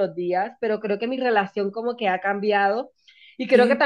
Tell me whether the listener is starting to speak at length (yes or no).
no